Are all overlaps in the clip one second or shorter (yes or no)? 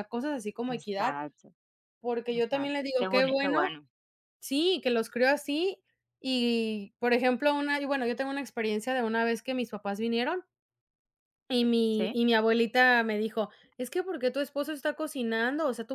no